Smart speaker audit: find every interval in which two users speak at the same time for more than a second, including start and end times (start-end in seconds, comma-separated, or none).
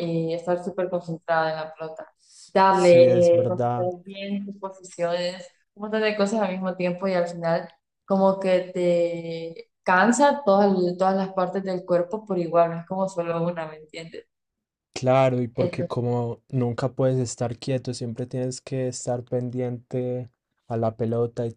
2.7-3.9